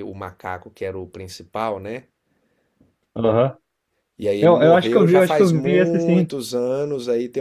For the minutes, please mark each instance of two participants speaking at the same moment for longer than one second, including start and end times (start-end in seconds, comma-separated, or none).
4.4-6.3